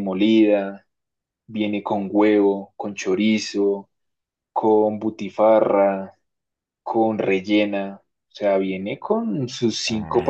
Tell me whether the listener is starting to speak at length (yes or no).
no